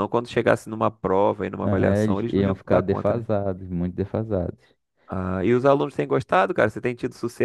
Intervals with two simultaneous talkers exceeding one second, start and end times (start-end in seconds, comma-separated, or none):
1.6-3.2